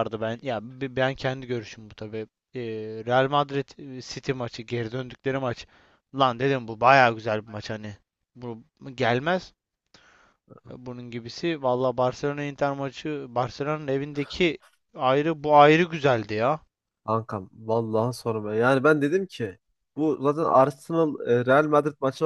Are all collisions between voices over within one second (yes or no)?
yes